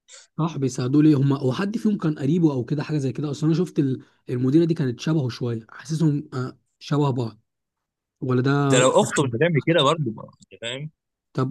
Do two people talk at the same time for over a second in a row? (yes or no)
no